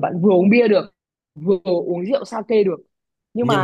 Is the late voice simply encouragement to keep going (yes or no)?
yes